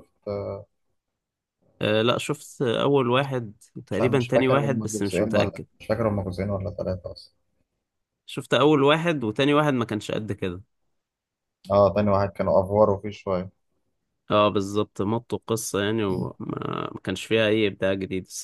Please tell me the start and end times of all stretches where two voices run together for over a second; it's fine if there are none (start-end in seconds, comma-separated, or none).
3.9-5.7